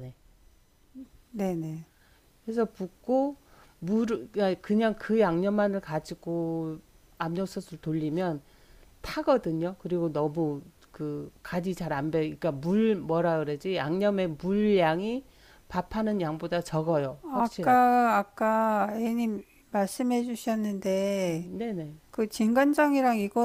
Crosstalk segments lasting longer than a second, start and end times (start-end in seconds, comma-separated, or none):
none